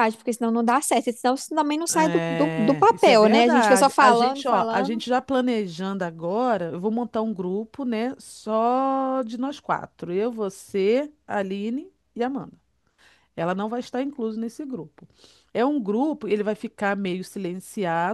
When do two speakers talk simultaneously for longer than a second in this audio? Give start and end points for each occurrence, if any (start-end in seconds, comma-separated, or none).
1.9-5.0